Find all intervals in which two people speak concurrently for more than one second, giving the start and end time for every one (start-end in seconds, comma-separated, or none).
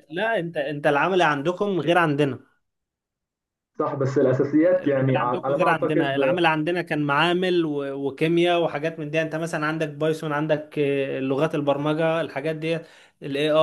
4.6-6.4